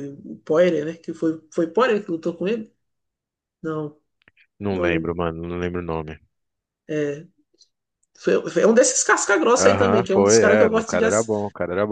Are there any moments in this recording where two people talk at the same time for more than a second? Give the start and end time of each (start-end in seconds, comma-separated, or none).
9.6-11.3